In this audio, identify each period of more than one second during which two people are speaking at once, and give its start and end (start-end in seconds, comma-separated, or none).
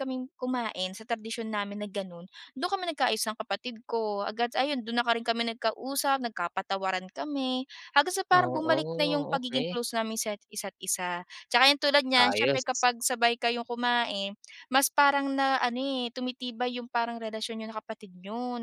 8.3-9.8